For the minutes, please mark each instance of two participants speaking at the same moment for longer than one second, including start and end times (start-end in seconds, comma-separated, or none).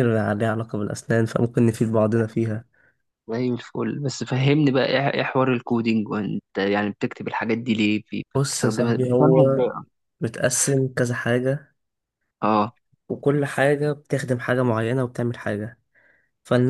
8.3-9.6